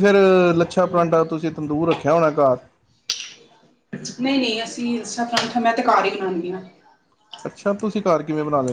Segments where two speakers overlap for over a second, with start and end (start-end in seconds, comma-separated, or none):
none